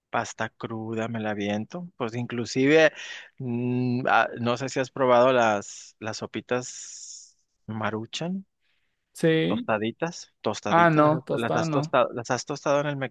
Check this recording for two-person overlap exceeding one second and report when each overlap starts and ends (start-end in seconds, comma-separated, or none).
10.7-11.9